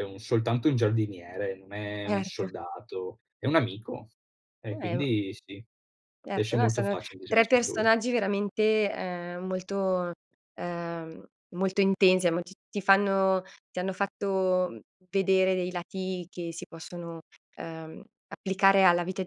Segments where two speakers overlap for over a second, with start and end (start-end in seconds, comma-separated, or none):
6.3-7.9